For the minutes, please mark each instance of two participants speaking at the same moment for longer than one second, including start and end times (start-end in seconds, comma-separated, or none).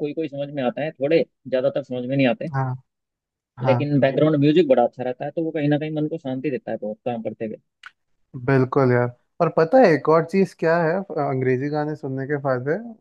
none